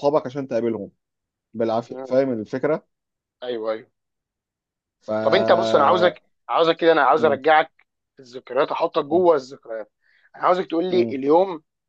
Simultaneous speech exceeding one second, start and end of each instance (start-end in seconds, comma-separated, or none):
none